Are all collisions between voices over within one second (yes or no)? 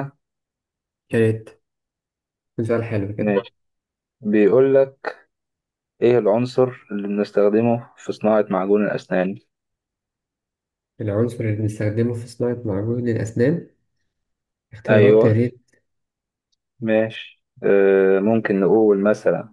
yes